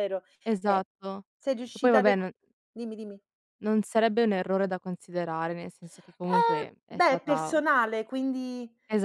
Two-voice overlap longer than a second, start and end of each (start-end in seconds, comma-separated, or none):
6.2-7.6